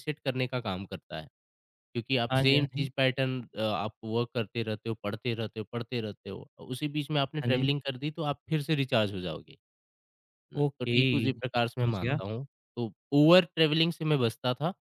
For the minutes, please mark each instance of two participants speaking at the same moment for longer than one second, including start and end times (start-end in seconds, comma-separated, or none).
10.6-12.2